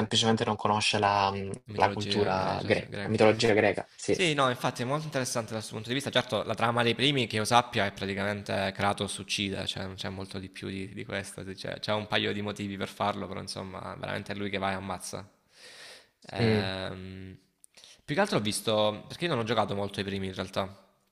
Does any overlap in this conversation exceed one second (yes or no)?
yes